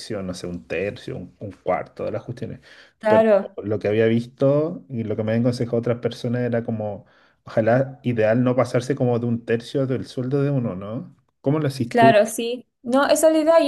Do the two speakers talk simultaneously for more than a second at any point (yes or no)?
no